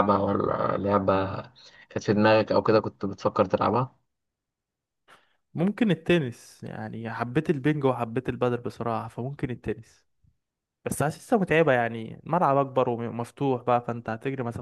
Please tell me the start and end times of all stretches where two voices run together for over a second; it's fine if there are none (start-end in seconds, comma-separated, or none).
none